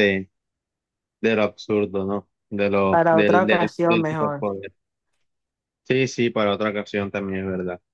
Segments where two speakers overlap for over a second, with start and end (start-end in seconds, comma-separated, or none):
2.9-4.5